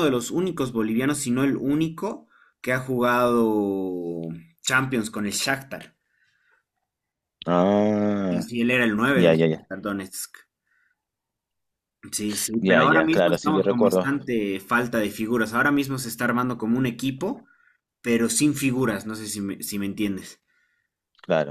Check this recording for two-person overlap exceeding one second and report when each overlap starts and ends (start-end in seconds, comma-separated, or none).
12.6-14.1